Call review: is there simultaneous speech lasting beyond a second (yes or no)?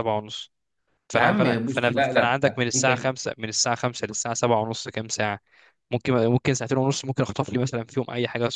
yes